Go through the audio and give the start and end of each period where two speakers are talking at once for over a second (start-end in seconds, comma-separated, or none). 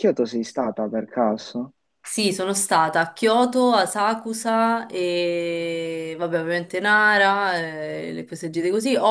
none